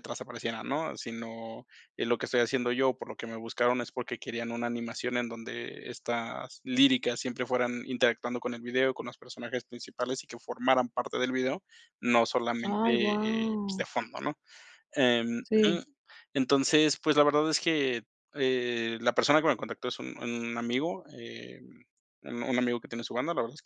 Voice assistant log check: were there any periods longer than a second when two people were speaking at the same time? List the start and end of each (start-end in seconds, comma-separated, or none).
12.6-13.8